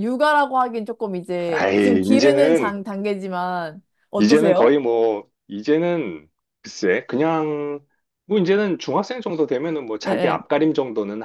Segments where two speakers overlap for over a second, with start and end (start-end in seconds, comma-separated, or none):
1.5-2.7